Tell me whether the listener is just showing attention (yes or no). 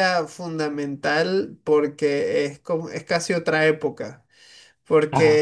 yes